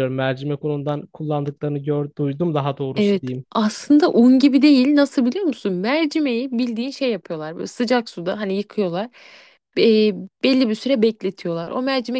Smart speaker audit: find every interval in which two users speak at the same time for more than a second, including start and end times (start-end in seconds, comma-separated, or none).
none